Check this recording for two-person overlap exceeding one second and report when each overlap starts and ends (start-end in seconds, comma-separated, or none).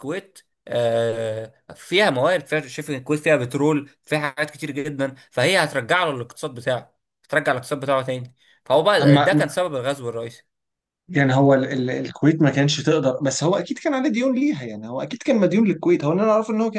none